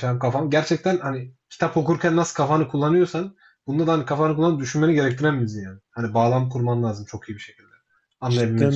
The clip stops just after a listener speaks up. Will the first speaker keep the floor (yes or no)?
no